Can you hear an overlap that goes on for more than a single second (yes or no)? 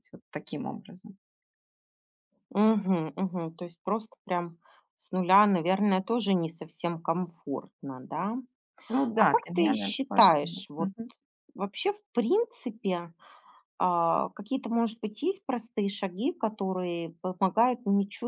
yes